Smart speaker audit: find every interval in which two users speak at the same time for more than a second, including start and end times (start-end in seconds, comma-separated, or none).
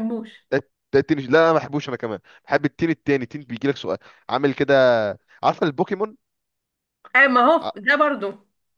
none